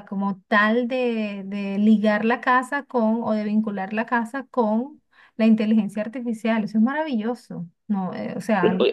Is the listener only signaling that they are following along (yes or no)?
no